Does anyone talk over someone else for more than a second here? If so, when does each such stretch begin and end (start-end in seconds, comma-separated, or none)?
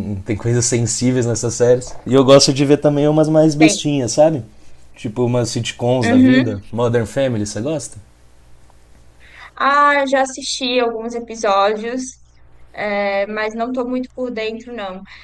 none